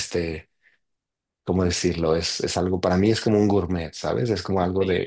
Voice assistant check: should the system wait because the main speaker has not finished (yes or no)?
no